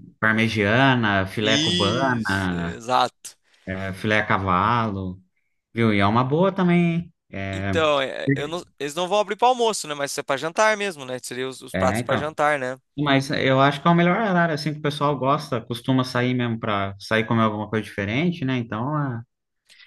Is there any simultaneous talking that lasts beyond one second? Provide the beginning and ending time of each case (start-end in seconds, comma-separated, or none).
1.4-2.8